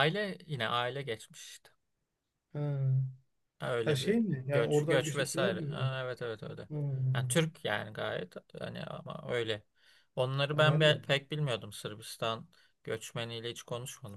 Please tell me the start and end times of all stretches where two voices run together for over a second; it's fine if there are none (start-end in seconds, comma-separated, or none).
3.8-5.9